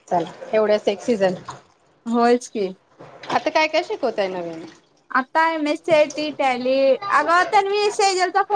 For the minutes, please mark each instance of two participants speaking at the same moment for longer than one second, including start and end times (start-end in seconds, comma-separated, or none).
none